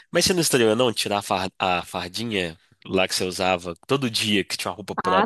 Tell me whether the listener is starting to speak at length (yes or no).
yes